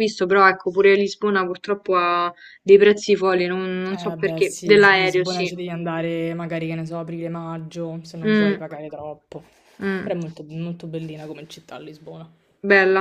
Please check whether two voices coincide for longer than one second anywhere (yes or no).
yes